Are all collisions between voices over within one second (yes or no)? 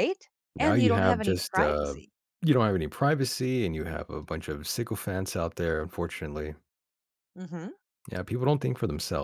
no